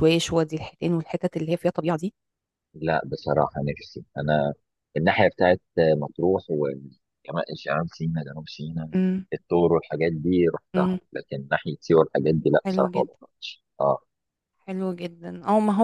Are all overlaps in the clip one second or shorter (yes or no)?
yes